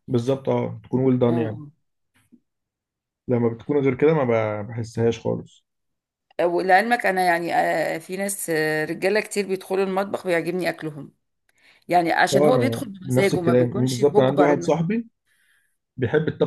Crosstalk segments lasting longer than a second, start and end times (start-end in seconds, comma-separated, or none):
12.3-14.8